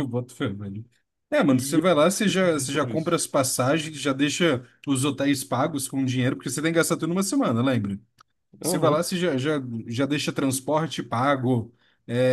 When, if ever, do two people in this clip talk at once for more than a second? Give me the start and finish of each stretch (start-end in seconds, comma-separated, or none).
1.5-3.2